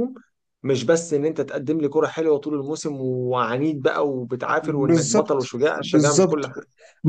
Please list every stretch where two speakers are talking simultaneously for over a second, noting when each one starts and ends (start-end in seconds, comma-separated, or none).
4.6-6.5